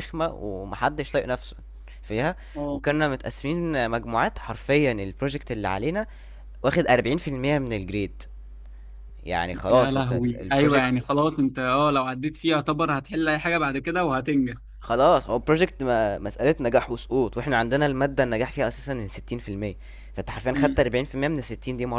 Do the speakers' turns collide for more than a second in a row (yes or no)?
yes